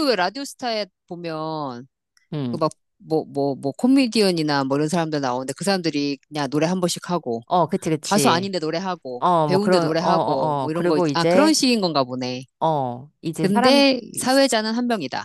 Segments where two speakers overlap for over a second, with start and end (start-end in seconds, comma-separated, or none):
9.2-11.5